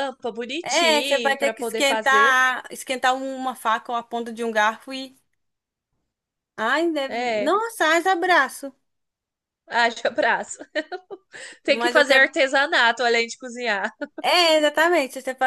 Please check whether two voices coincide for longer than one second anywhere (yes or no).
yes